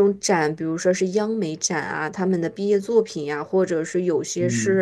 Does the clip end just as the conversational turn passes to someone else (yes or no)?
no